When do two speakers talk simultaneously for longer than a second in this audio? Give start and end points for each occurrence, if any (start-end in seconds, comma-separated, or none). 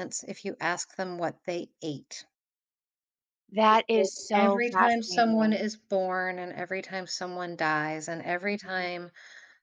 3.7-5.6